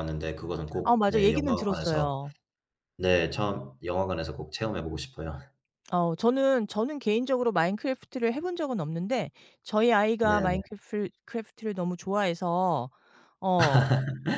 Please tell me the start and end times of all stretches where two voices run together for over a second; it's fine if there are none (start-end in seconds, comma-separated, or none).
0.8-2.1